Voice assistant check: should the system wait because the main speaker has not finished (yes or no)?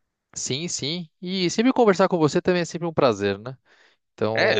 no